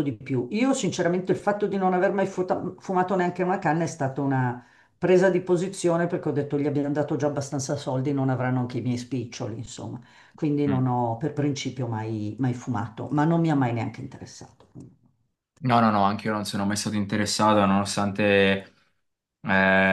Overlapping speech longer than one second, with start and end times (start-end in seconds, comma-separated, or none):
none